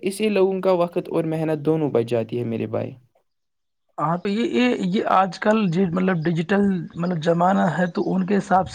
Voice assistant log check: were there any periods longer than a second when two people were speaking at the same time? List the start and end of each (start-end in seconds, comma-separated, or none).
none